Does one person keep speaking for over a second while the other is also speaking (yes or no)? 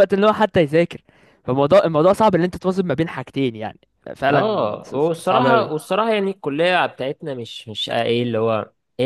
yes